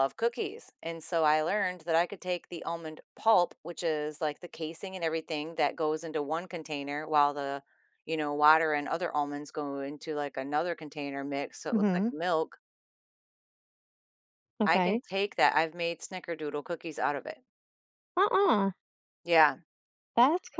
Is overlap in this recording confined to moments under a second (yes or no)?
yes